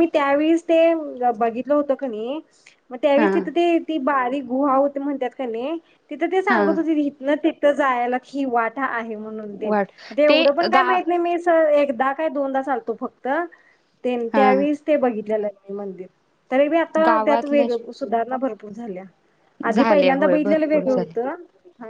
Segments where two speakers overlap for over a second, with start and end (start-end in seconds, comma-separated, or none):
19.7-21.1